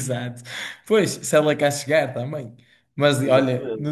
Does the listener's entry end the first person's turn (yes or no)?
no